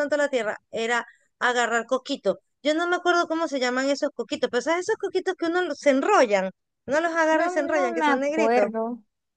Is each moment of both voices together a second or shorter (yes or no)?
no